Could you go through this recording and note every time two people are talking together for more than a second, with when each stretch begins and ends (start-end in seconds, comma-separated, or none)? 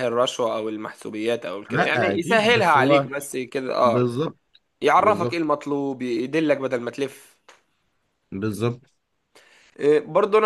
1.7-3.1